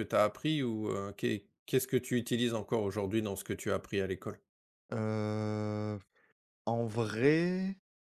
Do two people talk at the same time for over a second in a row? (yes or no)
no